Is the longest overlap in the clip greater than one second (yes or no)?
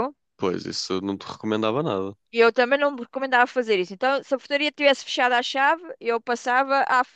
no